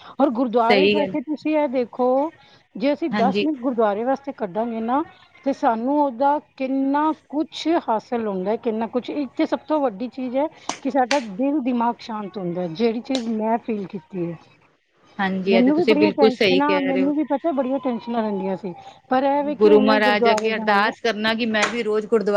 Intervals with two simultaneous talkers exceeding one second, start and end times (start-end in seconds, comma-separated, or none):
15.5-17.1, 19.6-20.9